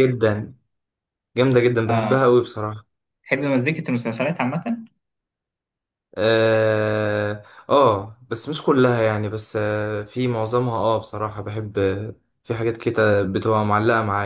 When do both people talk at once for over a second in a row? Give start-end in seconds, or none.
none